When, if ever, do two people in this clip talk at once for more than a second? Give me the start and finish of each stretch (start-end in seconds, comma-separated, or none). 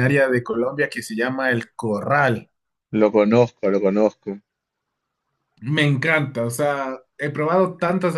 none